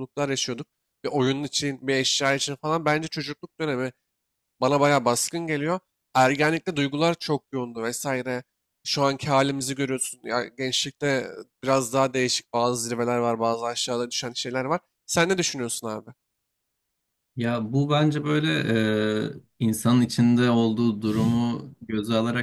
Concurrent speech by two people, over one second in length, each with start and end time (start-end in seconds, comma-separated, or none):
none